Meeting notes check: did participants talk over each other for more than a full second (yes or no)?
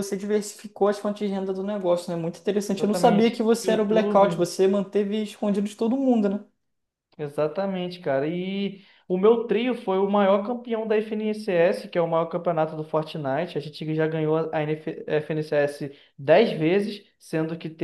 yes